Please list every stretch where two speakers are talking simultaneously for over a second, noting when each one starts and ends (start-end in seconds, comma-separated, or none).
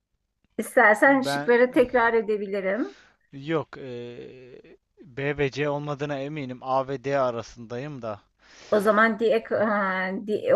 none